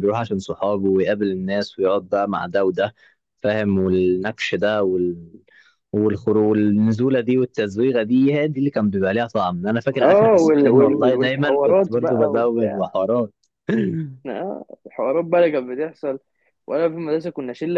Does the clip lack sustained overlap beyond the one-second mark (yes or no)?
no